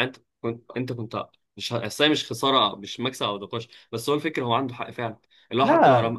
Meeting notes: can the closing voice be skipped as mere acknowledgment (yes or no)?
yes